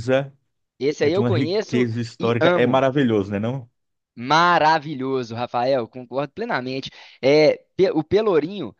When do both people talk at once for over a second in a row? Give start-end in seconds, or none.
1.0-2.9